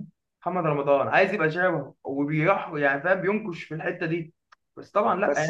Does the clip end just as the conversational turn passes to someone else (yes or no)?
yes